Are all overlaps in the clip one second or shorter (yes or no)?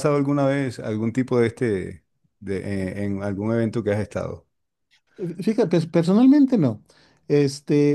yes